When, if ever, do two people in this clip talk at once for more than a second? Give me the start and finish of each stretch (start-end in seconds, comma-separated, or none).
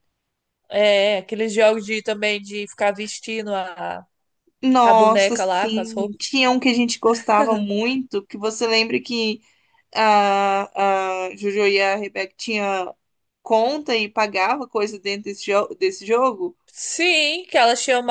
4.8-6.2